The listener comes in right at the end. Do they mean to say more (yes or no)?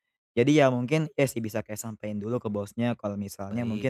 no